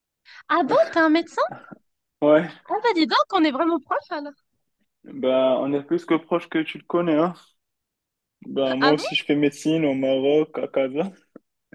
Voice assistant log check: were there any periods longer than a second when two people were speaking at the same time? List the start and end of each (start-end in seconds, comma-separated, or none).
none